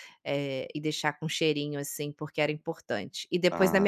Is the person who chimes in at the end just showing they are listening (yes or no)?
yes